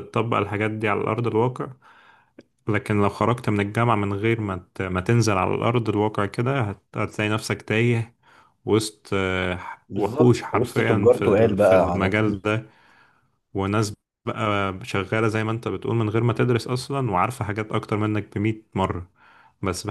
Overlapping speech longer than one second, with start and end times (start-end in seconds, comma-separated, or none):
10.0-12.4